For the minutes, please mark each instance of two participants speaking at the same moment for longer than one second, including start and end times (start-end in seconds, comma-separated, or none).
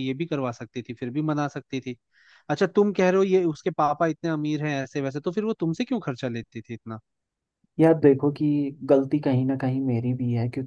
none